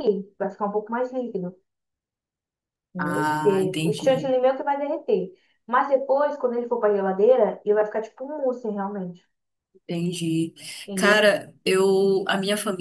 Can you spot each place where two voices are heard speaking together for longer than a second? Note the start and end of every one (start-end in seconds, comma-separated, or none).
3.0-4.3